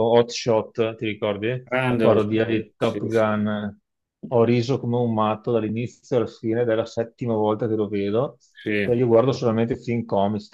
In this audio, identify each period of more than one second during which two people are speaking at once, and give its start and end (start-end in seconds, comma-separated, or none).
1.9-3.3